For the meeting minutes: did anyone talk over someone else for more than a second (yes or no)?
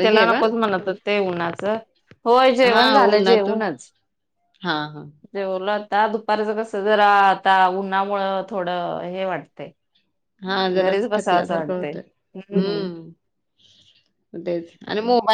no